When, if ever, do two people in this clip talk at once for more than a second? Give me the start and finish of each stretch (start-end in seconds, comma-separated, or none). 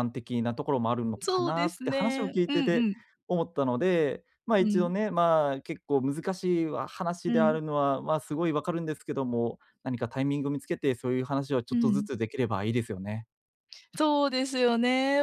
1.2-2.9